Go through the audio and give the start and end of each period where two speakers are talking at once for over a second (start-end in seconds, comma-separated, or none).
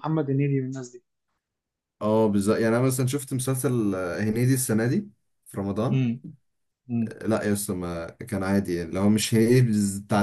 none